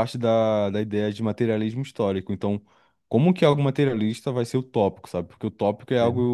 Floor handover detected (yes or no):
no